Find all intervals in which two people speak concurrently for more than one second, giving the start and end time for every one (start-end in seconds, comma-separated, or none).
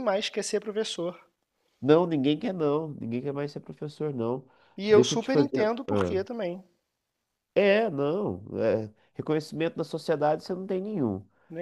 4.9-6.2